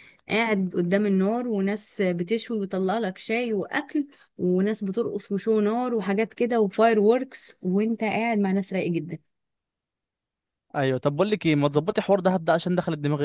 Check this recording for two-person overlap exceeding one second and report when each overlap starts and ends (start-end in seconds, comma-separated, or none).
none